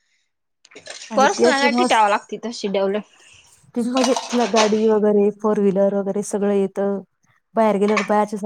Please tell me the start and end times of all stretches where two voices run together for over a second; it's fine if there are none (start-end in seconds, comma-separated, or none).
none